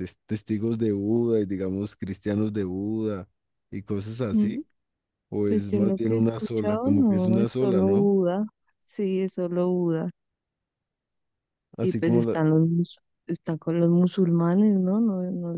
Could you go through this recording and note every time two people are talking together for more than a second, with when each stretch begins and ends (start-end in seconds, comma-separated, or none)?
5.4-8.1